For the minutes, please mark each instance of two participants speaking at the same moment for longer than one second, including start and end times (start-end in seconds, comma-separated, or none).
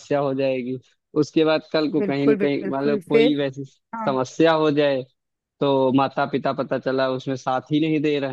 2.0-3.4